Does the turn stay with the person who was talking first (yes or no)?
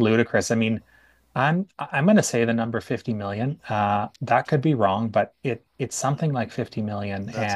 yes